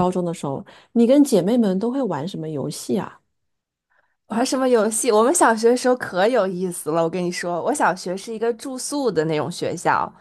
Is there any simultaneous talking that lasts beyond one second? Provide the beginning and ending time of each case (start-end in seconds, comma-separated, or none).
none